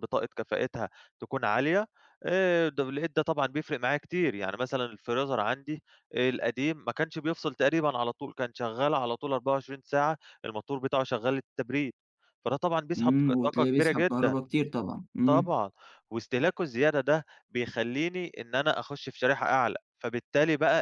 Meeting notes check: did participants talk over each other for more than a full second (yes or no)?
yes